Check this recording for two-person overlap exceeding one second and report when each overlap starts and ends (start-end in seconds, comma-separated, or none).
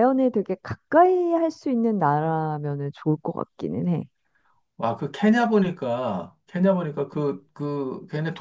none